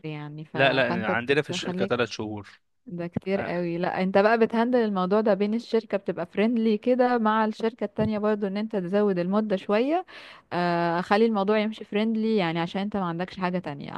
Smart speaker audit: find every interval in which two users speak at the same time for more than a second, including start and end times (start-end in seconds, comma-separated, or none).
0.5-2.0